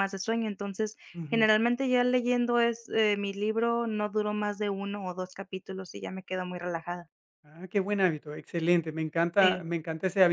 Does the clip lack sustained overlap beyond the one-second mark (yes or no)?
yes